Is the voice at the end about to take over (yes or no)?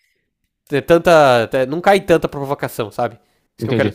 yes